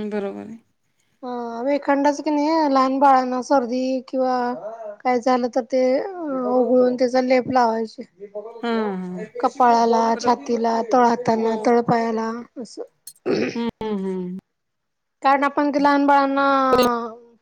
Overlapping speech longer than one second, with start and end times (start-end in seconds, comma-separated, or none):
none